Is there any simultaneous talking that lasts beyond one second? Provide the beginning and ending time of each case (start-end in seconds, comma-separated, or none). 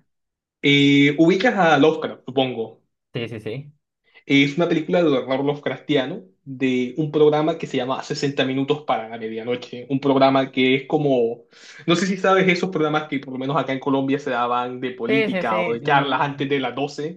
15.1-16.4